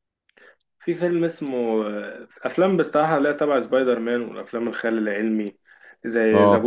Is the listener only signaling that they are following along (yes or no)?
yes